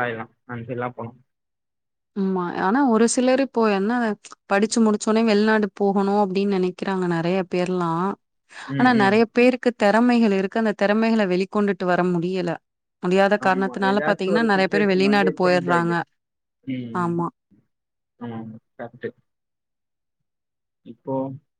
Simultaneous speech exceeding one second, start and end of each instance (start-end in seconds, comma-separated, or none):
13.5-15.9